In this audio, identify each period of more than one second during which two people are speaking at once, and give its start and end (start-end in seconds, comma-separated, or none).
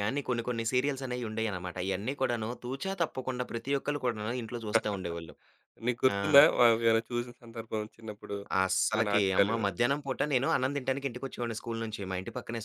none